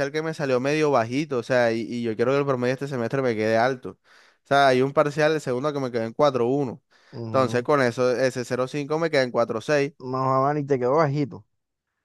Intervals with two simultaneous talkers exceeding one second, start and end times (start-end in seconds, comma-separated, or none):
none